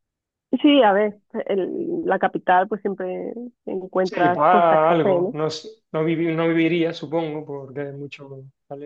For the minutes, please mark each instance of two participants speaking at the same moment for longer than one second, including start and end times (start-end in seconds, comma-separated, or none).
4.0-5.3